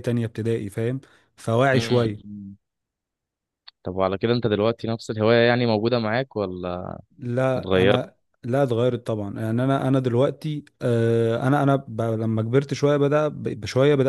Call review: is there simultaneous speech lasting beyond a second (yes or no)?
no